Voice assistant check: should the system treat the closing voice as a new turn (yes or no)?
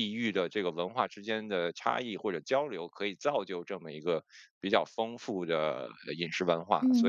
yes